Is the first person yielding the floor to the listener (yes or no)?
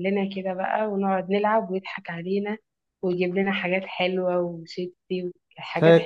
yes